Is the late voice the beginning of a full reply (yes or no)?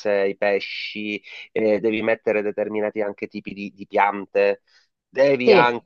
no